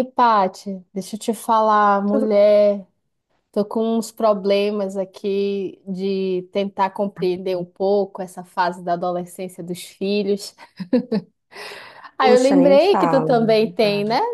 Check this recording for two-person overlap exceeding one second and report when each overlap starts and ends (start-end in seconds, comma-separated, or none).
12.2-13.5